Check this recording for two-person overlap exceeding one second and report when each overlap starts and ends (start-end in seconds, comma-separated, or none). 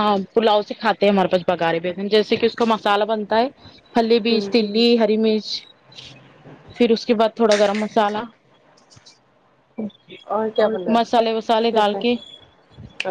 10.6-12.0